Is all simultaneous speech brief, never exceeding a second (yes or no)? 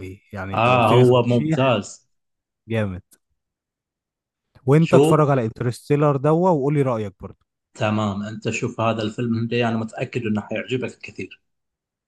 no